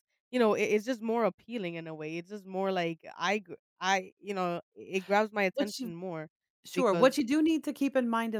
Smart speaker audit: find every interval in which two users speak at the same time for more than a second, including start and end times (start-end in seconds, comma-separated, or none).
none